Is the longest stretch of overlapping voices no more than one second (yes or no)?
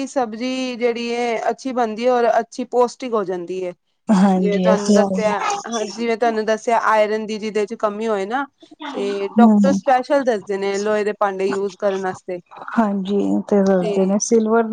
yes